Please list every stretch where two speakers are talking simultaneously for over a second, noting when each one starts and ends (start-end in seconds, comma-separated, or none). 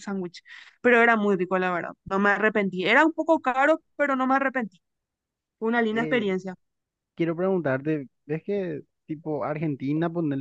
none